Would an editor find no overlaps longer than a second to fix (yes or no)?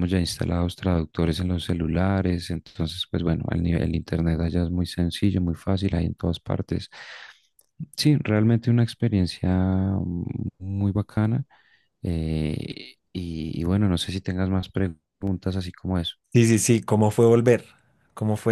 yes